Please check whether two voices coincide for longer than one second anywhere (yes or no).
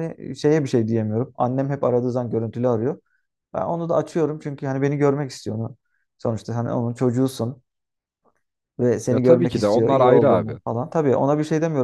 yes